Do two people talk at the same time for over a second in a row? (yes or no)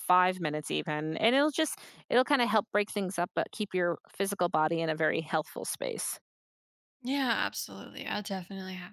no